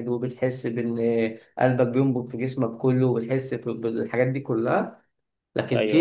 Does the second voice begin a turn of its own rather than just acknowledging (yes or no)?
no